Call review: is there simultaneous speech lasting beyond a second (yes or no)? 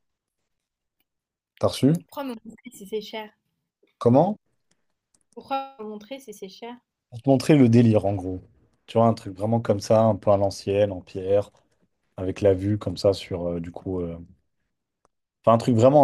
no